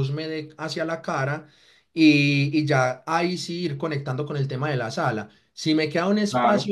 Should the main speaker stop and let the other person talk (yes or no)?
no